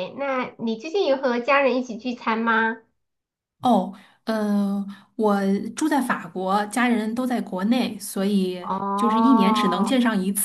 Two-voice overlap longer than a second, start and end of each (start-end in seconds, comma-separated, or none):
8.6-9.9